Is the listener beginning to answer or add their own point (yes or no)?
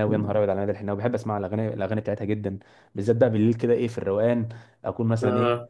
no